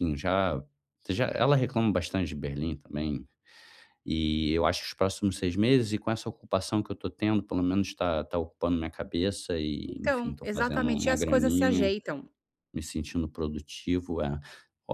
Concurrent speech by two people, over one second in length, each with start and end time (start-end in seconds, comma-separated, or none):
9.9-11.9